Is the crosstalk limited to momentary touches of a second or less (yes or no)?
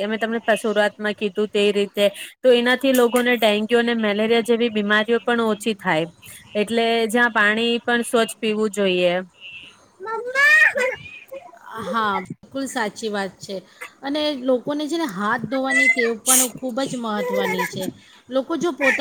yes